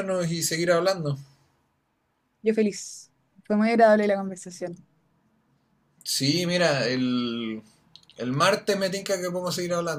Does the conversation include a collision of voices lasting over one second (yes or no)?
no